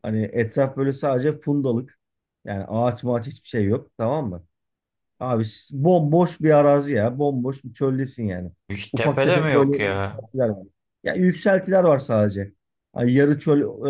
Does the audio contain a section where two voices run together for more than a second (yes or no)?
yes